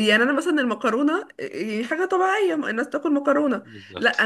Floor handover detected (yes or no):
no